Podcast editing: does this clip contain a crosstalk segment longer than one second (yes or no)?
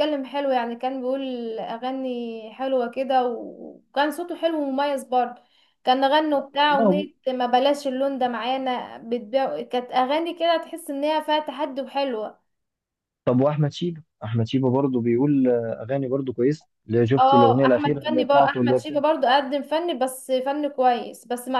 yes